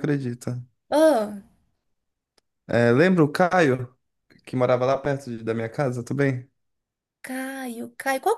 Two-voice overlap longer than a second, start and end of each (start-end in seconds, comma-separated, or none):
none